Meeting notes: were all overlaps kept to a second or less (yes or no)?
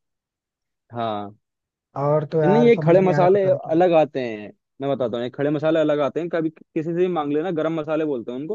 no